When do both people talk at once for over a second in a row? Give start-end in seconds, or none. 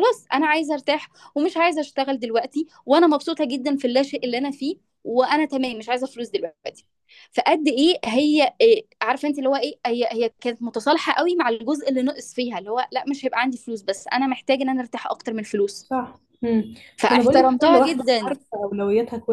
17.1-18.4